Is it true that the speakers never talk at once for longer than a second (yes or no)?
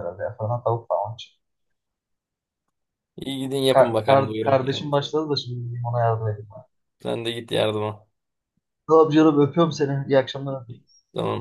no